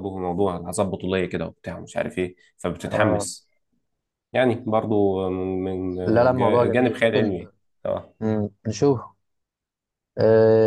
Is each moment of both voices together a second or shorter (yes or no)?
no